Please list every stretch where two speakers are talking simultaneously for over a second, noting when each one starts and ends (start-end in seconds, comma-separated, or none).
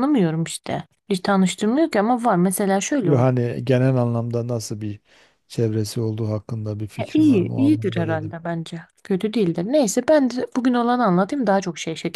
7.0-8.3